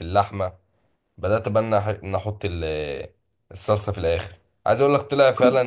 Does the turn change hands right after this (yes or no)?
no